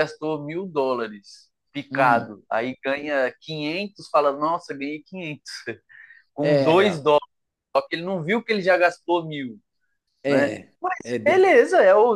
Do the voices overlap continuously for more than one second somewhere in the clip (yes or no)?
no